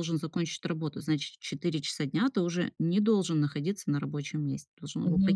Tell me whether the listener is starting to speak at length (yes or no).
yes